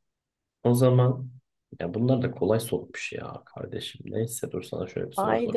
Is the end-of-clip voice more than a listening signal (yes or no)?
yes